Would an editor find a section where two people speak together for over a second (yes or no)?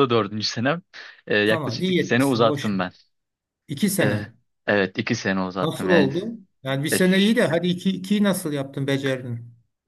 yes